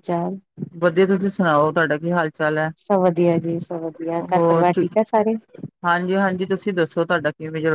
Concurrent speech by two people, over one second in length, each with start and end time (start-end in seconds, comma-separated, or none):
none